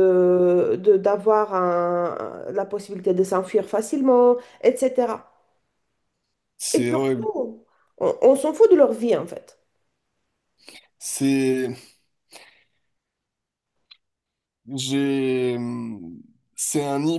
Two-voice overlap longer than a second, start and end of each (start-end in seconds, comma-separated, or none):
none